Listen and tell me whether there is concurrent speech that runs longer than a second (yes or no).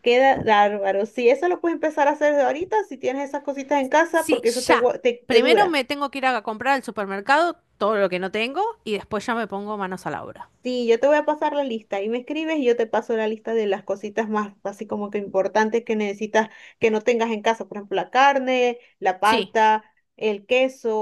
yes